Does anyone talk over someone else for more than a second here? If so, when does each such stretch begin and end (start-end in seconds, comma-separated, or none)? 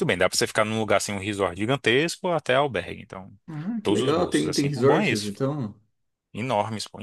3.8-5.3